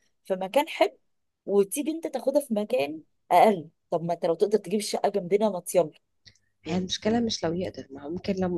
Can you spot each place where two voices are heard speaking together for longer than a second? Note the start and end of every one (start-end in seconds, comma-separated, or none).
none